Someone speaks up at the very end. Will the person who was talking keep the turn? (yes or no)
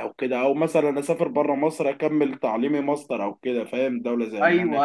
no